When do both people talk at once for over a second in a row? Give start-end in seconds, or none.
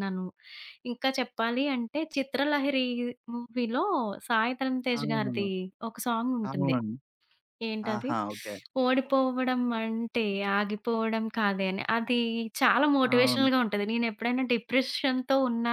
none